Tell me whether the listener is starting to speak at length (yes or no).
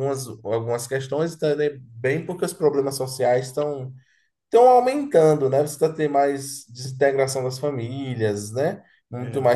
no